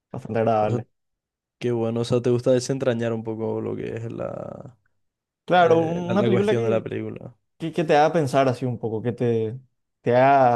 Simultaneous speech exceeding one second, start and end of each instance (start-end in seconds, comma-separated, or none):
5.5-6.9